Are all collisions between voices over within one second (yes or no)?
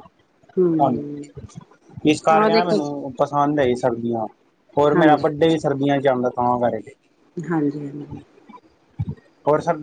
yes